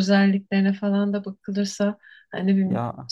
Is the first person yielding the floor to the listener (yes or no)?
no